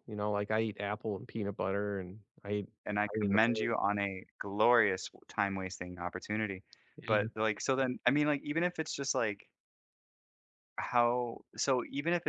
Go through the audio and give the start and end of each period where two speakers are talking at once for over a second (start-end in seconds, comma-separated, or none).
none